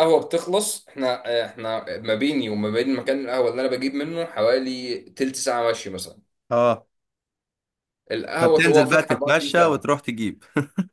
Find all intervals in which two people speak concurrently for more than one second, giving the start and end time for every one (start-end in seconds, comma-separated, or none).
8.4-9.9